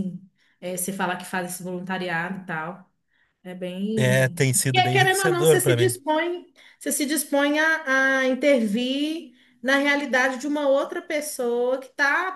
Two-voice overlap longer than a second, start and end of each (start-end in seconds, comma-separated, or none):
4.0-6.0